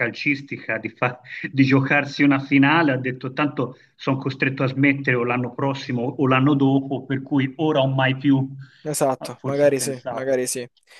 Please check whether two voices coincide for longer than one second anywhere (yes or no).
yes